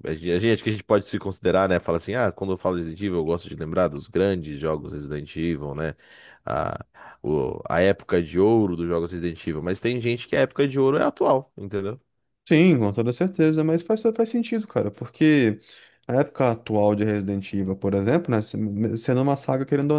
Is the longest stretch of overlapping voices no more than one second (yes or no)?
yes